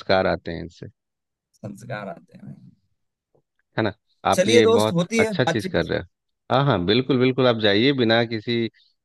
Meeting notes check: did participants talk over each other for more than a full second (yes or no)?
yes